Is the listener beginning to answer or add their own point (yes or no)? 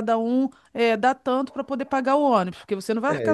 yes